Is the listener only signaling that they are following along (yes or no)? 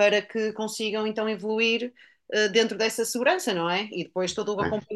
yes